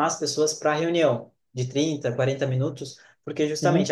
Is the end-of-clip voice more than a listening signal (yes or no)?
no